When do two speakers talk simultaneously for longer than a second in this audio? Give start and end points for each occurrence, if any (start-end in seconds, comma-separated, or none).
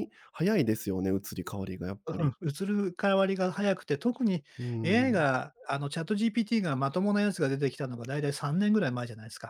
none